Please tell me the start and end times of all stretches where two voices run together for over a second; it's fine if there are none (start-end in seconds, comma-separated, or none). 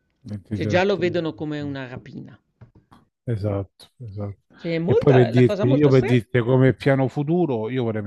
4.8-6.2